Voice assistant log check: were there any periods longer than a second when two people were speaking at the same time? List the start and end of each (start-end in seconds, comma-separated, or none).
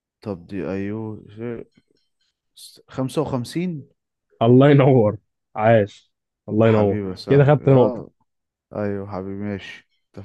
6.6-8.0